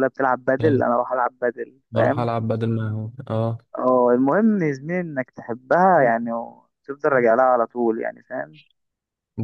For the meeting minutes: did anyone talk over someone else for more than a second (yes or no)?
no